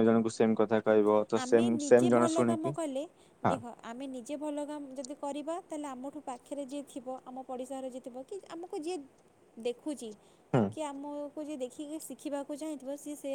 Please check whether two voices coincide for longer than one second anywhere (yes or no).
no